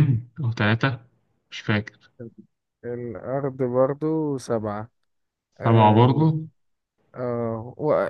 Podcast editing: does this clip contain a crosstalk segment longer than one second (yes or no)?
no